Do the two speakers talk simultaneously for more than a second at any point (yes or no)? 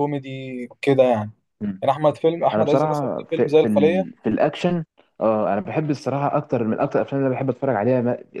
yes